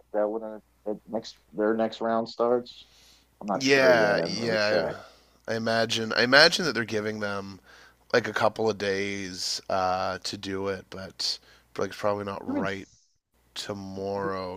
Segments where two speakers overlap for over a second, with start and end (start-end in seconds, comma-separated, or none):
3.5-4.9